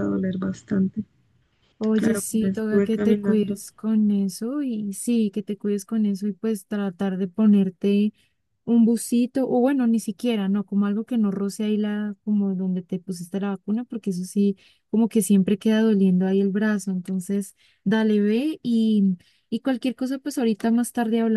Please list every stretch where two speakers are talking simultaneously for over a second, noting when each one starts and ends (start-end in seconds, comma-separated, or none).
1.9-3.6